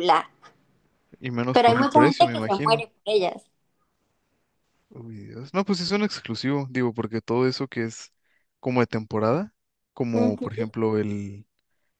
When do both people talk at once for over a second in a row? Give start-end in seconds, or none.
1.5-2.8